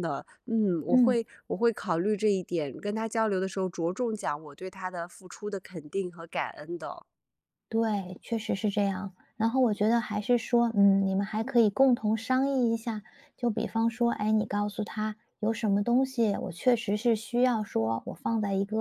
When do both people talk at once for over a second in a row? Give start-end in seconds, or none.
none